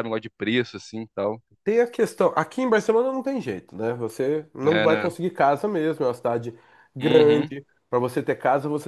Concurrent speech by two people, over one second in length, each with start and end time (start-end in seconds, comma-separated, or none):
none